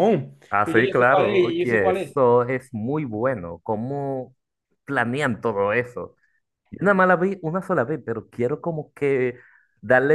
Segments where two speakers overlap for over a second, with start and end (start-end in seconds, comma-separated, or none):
0.5-2.1